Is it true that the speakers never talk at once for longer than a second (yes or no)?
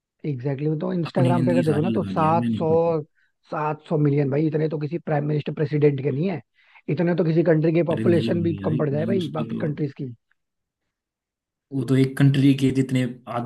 no